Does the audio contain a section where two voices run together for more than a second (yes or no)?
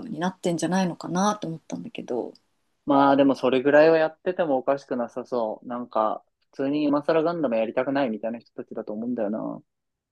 no